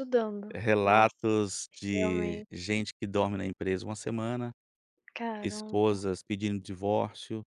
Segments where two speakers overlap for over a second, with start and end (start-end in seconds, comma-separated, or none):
none